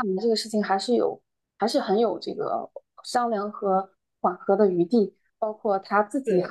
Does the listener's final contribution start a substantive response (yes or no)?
no